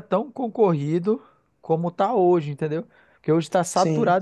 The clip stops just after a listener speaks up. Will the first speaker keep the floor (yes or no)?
yes